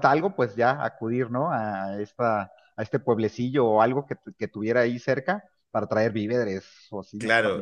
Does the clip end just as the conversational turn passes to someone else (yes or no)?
yes